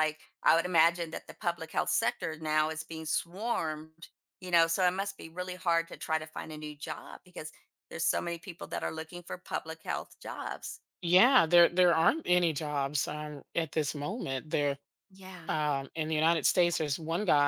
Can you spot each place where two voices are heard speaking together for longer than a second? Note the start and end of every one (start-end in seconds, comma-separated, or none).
none